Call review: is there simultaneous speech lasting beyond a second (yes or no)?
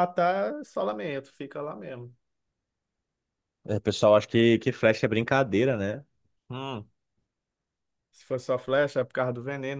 no